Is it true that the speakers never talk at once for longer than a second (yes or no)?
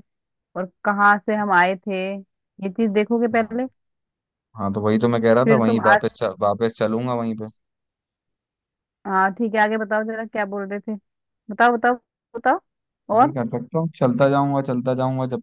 yes